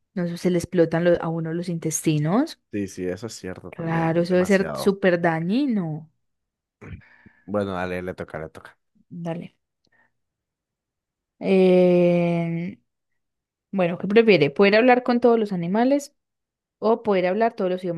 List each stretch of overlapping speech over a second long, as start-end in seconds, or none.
3.7-5.0